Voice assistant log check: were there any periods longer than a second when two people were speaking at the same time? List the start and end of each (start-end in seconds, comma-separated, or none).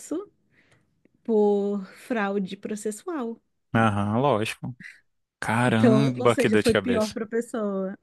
5.6-7.2